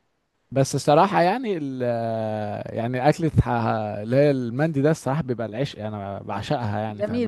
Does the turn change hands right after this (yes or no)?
yes